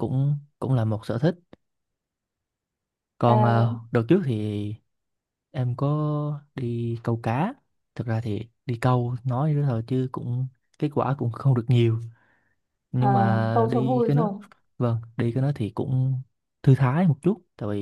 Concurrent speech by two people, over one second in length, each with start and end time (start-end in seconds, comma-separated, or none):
13.0-14.3